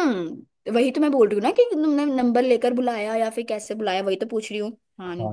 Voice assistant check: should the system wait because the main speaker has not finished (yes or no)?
no